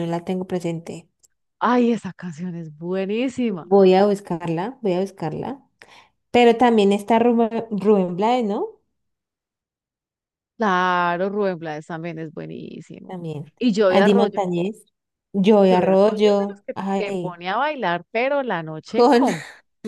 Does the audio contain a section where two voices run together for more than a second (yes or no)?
yes